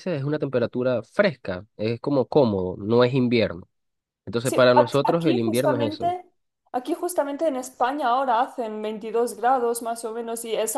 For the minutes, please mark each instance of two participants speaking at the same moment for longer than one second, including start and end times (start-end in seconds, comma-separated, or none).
4.4-6.1